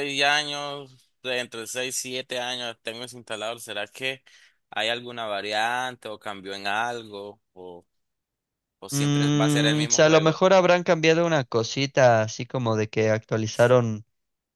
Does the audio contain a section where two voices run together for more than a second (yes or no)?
yes